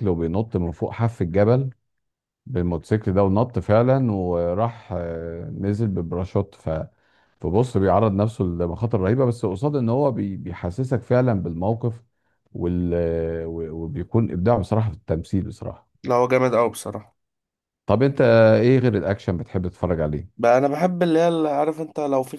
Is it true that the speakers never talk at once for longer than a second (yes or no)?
yes